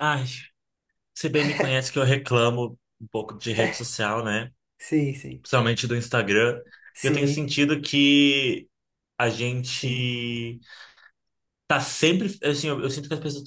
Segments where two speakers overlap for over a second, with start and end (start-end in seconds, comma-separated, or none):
none